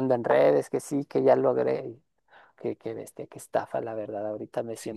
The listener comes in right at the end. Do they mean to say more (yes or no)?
yes